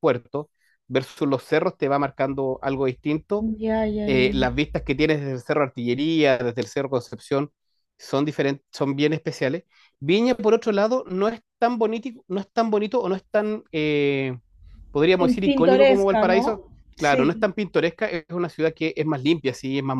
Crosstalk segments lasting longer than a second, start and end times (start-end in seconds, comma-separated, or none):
15.2-17.5